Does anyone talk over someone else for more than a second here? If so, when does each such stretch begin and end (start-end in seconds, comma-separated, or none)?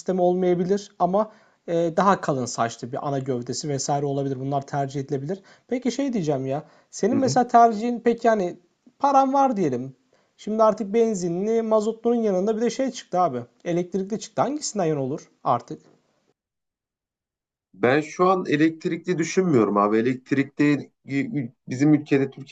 none